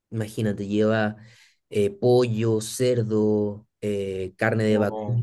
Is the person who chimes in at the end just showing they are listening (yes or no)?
yes